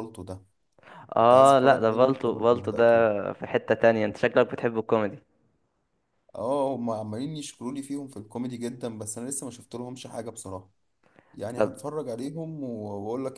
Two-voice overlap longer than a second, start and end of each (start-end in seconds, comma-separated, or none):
1.2-2.8